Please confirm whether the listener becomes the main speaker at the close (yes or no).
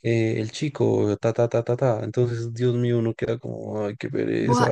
yes